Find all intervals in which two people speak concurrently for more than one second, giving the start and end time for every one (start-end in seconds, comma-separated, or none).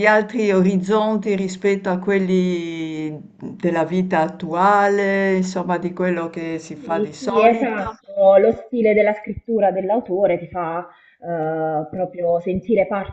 6.7-7.9